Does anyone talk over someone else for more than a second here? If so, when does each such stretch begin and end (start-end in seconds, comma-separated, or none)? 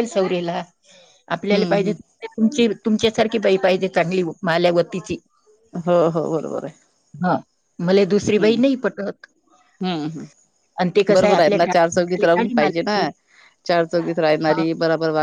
10.8-13.0